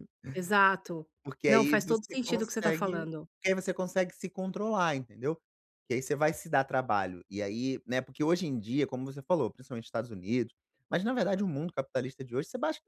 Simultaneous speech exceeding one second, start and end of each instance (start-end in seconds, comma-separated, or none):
1.5-3.0